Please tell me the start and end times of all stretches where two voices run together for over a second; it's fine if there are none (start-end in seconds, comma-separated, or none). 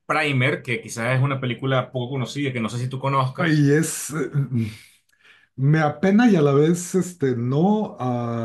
none